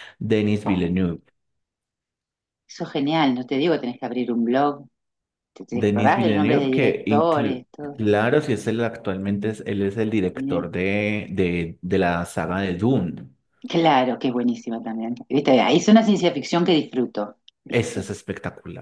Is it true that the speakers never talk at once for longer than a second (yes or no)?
no